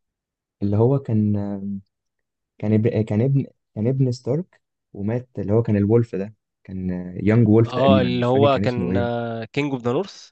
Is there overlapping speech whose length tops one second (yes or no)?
yes